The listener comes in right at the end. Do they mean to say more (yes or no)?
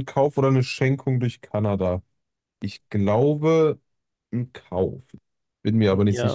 yes